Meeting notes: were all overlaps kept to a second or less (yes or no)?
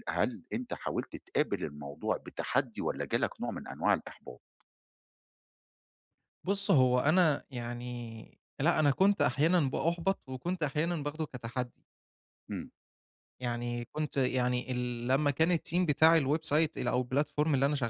yes